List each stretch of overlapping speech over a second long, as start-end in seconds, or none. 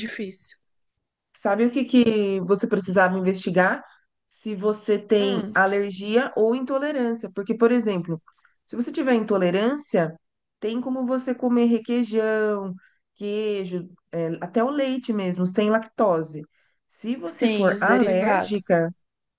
17.4-18.8